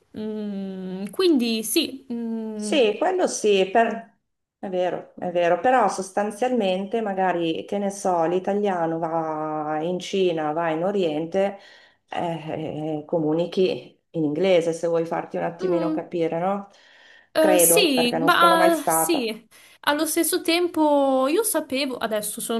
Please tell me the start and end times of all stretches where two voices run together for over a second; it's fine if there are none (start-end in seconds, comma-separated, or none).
17.4-19.3